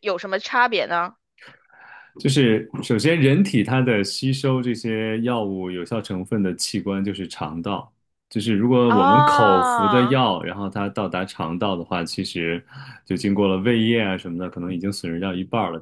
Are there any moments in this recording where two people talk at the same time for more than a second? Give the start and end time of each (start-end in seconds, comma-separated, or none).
8.9-10.2